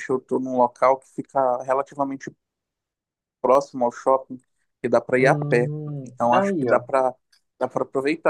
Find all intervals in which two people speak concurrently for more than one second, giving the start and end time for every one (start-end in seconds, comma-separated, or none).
5.2-6.8